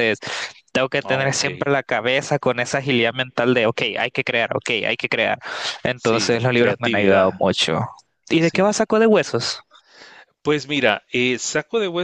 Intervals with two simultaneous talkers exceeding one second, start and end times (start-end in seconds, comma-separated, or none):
5.9-7.3